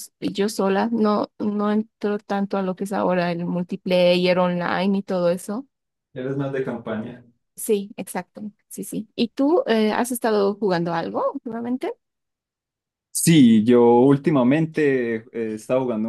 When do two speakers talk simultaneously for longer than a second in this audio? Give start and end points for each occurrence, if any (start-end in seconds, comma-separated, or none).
none